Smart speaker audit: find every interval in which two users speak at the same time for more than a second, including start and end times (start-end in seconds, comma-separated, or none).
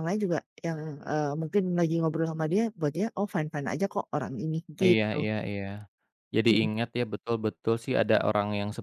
none